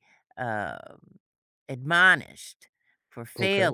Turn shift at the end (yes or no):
yes